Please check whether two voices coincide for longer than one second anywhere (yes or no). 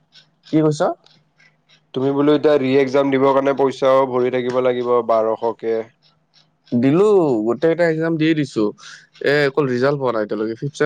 no